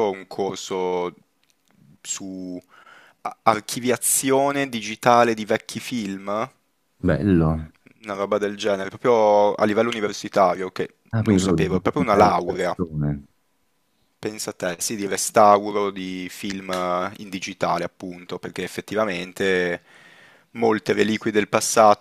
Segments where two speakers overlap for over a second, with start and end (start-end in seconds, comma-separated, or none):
11.1-12.8